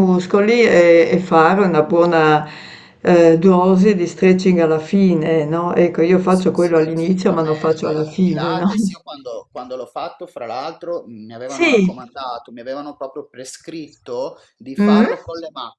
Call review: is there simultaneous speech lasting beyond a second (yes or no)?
yes